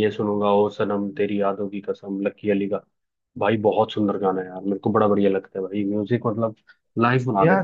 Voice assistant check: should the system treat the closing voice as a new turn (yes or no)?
yes